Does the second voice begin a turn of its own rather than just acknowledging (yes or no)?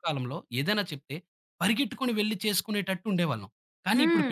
no